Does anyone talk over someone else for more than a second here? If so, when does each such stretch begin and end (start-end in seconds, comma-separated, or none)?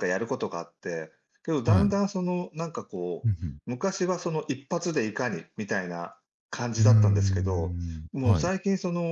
6.8-8.5